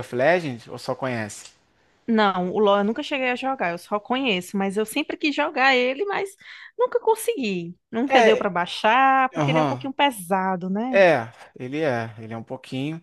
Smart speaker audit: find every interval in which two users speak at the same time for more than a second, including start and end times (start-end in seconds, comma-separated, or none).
none